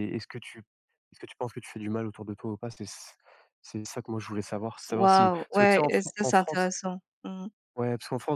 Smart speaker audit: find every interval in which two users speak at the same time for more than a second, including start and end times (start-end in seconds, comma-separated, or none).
4.9-6.7